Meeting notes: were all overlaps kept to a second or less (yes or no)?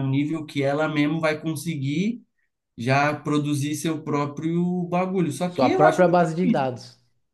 no